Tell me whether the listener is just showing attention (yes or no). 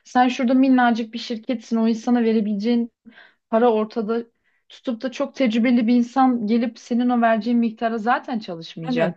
no